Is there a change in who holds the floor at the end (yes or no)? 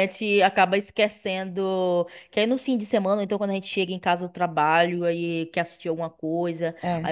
no